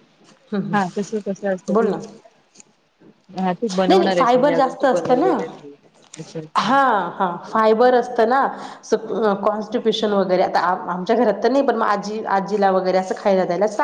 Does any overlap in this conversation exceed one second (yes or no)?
yes